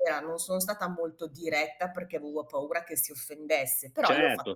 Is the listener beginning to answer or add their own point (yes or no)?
yes